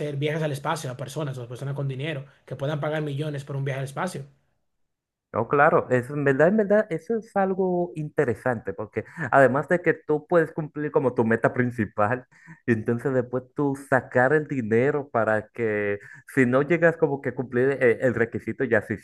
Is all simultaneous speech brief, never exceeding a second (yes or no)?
yes